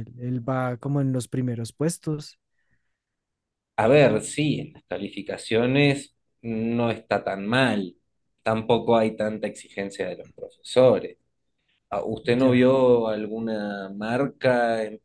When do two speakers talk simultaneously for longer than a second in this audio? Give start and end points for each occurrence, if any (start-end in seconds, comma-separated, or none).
none